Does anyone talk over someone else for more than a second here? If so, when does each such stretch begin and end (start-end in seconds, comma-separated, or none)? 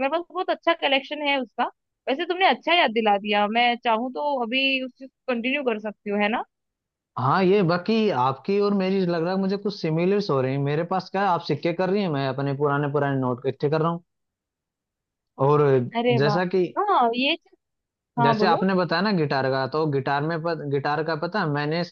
none